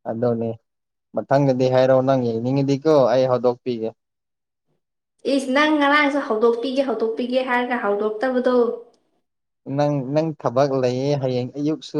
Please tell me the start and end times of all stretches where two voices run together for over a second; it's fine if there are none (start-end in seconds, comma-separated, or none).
none